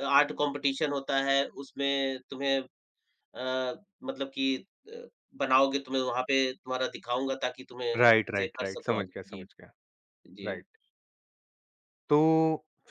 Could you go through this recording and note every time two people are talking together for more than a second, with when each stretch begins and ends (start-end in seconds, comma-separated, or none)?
8.0-9.4